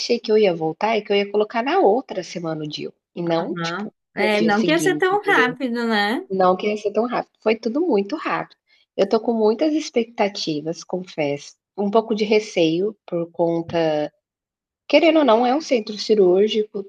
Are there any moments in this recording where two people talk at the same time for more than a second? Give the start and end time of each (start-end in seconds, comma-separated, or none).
3.3-5.6